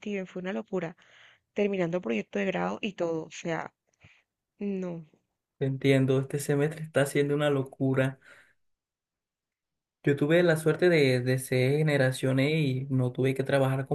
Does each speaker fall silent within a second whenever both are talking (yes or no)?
yes